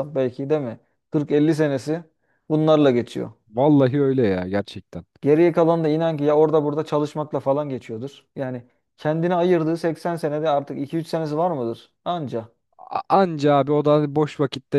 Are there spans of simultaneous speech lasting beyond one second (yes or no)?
no